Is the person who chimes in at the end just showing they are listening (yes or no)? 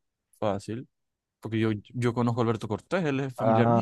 no